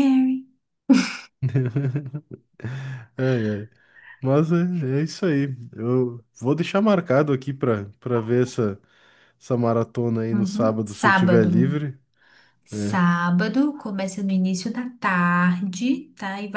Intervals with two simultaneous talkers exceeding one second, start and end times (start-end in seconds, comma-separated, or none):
10.3-11.8